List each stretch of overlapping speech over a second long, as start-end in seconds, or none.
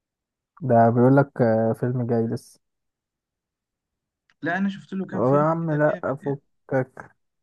5.1-6.4